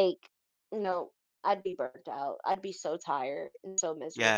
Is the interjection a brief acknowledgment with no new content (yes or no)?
no